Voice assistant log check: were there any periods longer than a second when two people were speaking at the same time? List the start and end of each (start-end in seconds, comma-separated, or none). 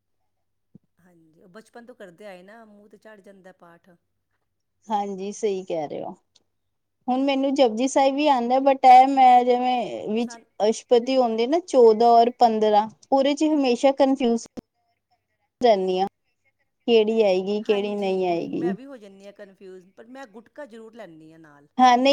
none